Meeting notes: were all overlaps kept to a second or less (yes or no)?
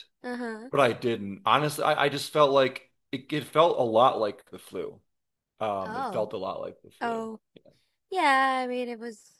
yes